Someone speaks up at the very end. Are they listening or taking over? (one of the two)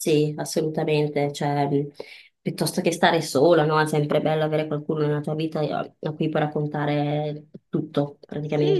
taking over